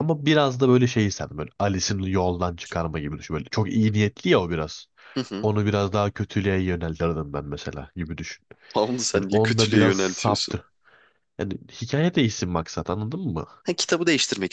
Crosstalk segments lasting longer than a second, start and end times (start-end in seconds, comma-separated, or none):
9.1-10.6